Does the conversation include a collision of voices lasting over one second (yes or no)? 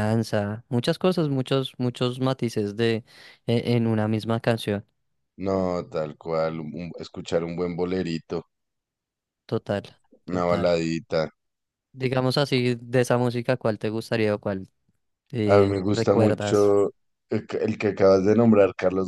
yes